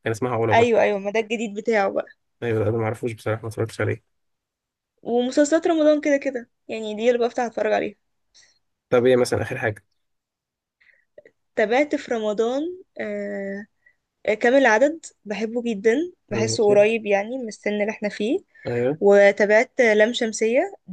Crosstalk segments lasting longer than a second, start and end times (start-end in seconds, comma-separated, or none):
none